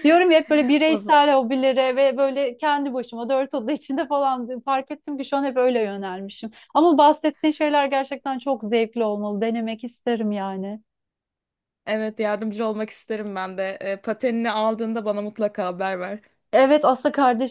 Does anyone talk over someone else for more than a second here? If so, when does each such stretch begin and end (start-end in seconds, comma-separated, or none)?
none